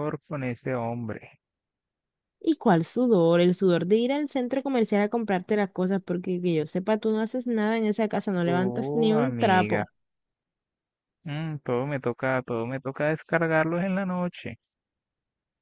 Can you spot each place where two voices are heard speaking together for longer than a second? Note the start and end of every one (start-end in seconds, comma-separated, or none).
8.4-9.8